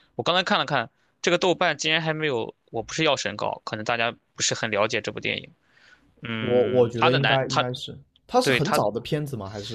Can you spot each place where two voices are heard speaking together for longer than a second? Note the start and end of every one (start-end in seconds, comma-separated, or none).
6.4-7.6